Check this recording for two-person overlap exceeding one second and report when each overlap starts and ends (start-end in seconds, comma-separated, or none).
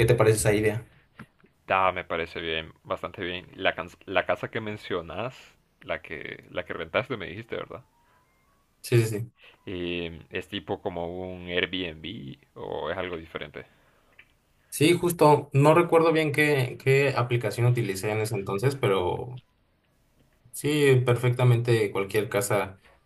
none